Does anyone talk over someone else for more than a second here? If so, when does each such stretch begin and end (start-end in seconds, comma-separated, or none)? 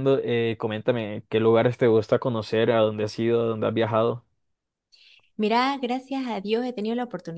none